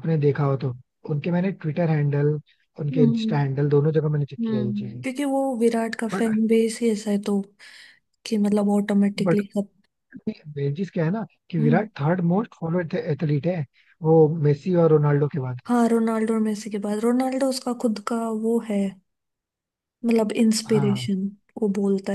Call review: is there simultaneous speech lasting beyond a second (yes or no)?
no